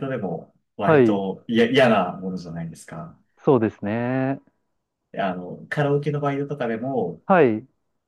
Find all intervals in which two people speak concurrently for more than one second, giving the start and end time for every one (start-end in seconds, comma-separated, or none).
none